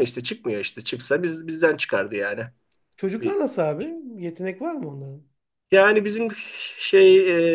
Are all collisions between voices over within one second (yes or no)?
yes